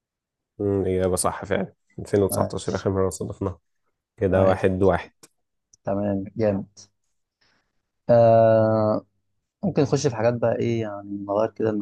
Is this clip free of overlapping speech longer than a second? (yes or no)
yes